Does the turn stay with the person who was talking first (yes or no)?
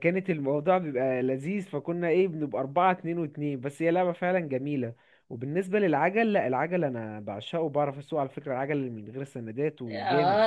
no